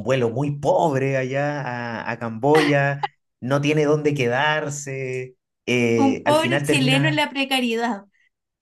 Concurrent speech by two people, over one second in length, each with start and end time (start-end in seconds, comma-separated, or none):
6.0-7.3